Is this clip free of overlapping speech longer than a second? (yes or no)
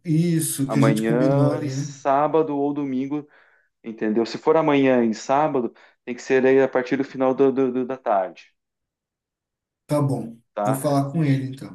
no